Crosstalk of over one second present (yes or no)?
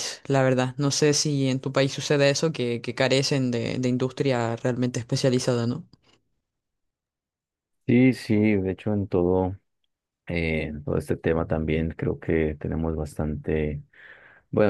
no